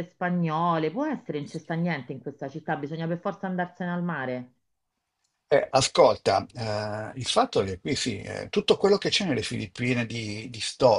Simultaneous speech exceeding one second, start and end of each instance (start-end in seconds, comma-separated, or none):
none